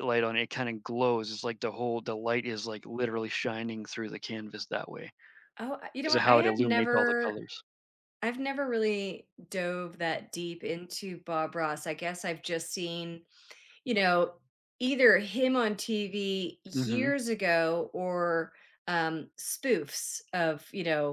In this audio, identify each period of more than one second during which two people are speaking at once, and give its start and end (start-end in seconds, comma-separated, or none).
6.0-7.4